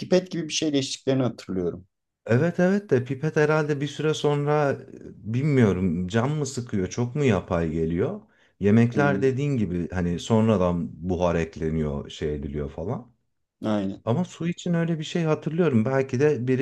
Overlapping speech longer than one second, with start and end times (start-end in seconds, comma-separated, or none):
none